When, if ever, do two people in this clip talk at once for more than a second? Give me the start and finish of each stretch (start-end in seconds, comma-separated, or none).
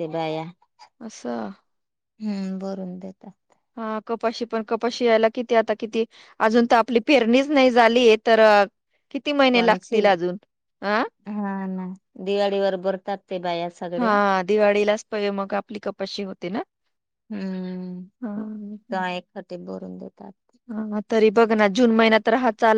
none